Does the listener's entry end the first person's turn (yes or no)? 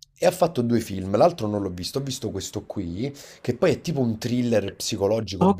yes